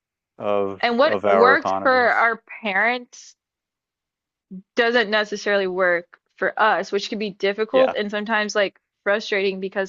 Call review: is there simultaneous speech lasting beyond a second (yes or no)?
yes